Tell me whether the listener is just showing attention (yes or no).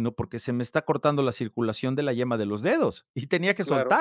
no